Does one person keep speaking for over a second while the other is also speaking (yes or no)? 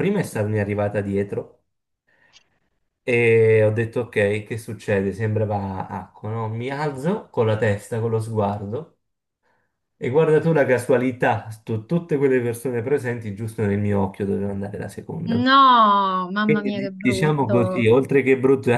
yes